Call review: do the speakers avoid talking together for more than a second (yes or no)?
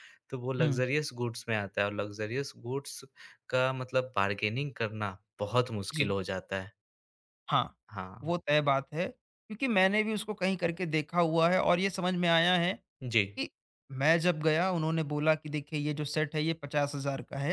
yes